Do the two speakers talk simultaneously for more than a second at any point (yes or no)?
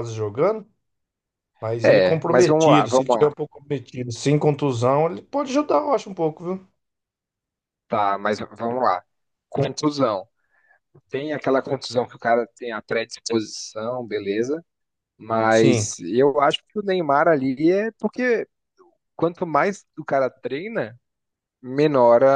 yes